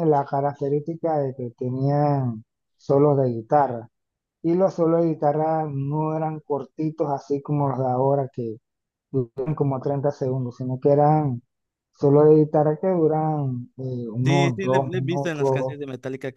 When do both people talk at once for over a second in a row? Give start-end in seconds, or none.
14.2-15.8